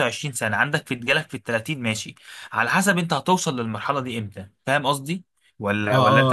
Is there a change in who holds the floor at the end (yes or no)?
yes